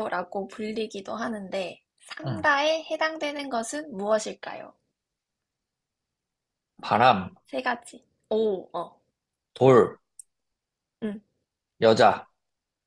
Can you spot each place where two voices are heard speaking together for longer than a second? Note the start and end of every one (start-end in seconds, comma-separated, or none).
none